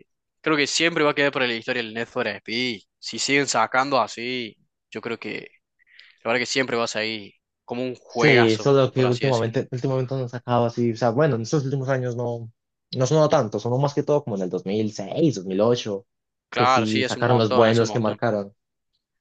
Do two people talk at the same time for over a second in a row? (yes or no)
yes